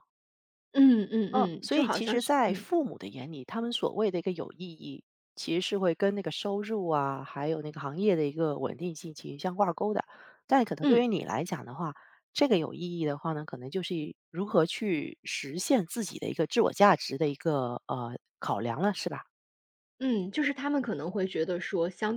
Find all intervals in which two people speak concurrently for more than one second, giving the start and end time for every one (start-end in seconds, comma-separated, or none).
1.4-2.7